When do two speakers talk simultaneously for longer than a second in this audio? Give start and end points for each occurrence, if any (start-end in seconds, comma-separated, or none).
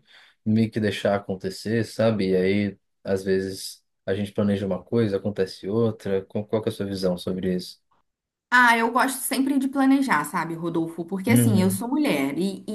none